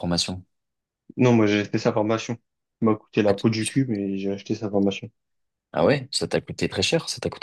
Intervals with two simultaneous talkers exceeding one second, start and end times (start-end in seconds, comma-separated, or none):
none